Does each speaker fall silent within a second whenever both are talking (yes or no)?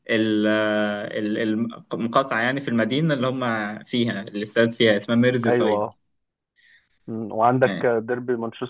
yes